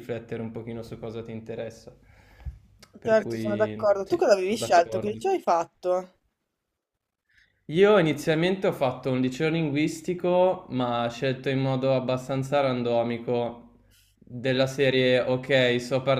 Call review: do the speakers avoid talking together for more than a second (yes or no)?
no